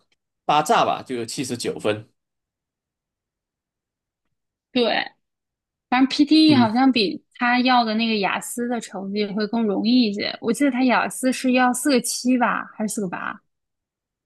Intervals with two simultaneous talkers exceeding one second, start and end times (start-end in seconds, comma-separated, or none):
none